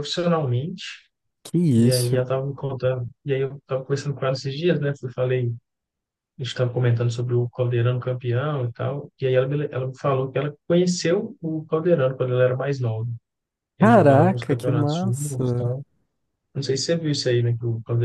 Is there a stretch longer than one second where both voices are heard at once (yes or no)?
yes